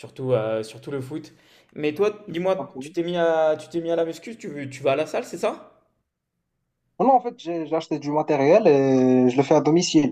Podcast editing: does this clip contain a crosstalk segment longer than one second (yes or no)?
no